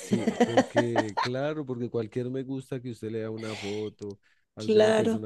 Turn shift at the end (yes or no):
no